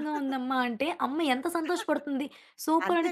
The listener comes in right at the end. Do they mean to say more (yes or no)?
no